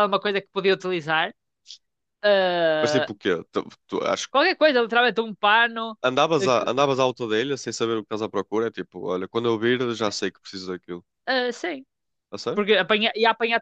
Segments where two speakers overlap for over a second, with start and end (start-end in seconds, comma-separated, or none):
none